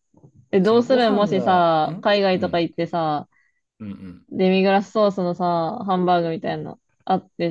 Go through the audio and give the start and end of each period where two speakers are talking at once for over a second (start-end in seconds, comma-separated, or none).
0.6-2.6